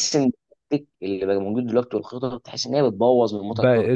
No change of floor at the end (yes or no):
no